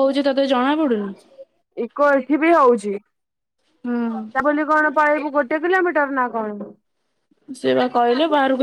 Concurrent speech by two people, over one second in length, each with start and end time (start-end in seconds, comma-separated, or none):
none